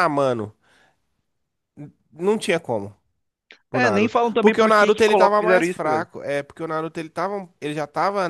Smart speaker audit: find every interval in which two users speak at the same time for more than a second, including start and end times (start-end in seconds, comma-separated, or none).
3.7-6.1